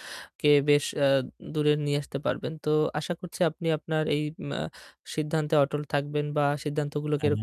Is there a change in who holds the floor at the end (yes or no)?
no